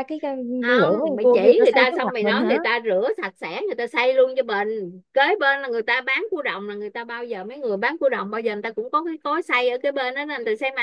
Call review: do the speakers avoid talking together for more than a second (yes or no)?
no